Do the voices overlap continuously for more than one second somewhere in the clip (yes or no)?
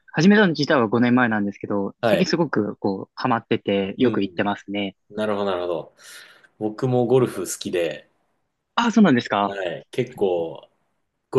no